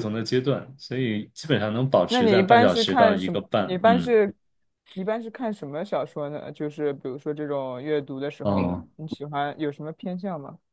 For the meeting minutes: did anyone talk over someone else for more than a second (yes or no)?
yes